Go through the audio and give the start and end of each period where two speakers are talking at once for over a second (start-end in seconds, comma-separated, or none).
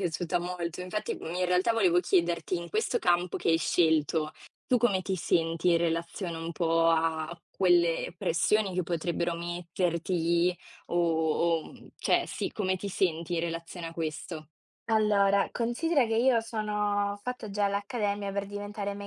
none